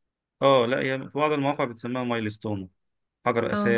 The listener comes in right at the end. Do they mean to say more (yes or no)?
no